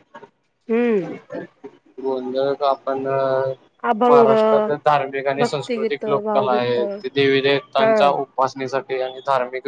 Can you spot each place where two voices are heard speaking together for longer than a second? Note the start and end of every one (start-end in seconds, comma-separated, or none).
5.4-6.8